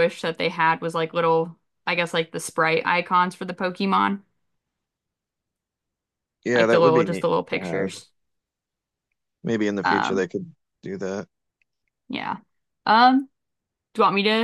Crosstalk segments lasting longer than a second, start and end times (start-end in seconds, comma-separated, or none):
6.5-7.9